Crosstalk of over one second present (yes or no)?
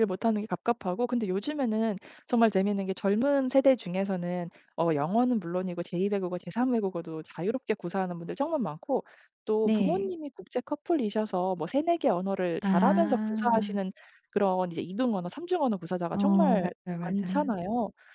yes